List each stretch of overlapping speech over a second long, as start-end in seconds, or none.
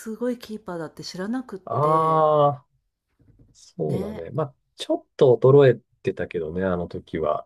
none